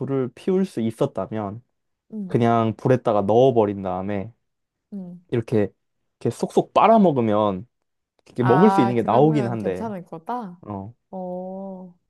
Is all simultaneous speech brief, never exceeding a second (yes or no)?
no